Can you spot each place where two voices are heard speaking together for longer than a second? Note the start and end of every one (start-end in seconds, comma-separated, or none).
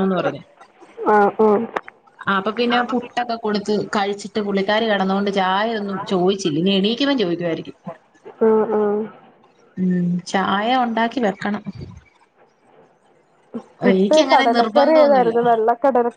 13.9-15.3